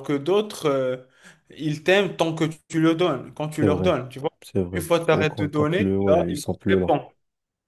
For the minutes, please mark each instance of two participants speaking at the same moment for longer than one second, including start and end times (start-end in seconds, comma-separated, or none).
4.7-6.9